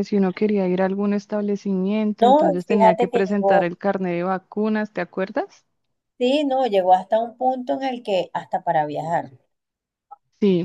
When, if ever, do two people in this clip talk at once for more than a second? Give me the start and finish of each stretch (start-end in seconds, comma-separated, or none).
2.2-3.7